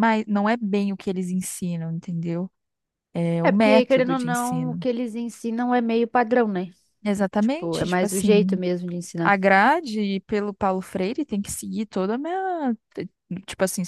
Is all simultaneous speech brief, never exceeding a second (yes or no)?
no